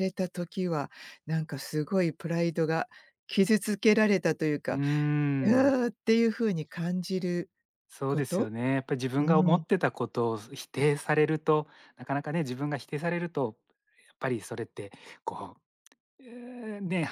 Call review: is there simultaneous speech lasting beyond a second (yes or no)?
no